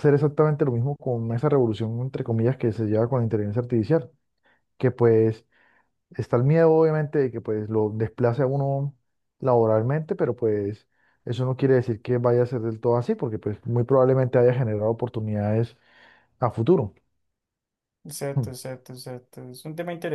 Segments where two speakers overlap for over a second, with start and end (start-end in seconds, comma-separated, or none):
none